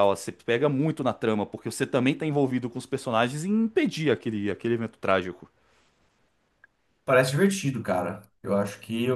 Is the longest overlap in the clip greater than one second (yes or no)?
no